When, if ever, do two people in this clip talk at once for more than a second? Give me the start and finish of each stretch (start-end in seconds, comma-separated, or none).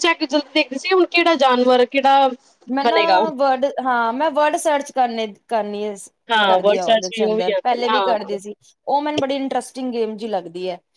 6.5-8.4